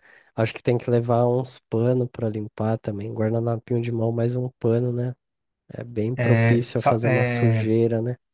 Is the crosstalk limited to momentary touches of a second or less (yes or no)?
no